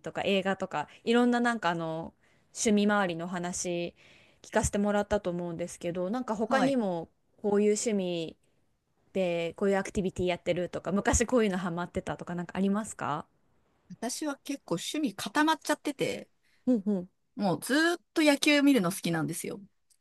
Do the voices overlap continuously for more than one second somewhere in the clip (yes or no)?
no